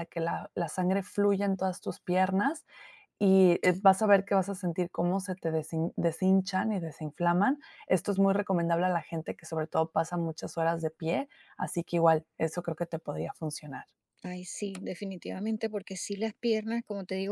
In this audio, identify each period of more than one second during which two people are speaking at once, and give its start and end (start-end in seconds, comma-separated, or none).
none